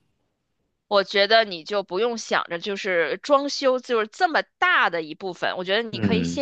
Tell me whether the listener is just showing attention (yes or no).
yes